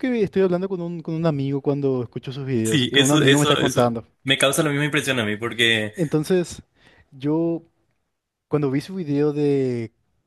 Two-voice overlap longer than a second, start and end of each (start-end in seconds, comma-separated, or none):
2.6-4.0